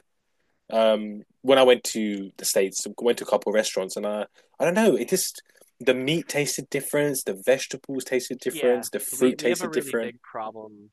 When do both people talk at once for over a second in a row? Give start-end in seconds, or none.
8.5-10.1